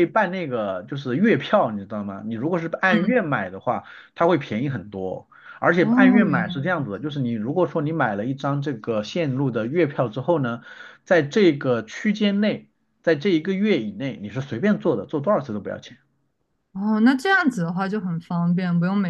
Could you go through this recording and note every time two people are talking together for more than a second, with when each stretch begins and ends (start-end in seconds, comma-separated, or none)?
5.8-7.0